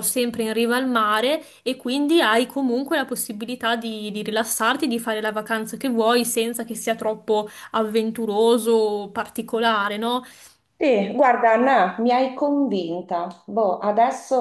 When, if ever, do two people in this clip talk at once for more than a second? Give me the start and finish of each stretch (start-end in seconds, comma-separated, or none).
none